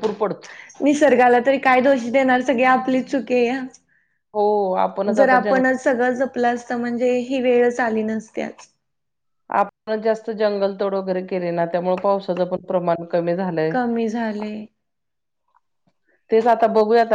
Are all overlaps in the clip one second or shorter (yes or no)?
yes